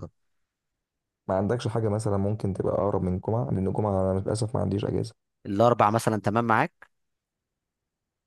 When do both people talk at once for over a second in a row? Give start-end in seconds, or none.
none